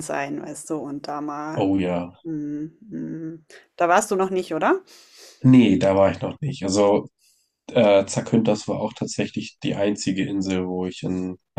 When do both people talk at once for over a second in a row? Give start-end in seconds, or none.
none